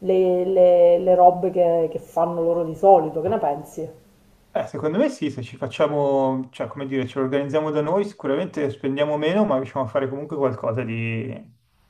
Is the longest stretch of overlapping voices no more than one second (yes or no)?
yes